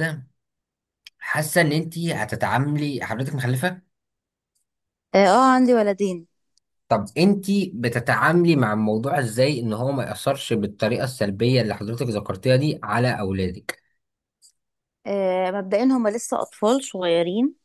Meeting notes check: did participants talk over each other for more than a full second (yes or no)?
no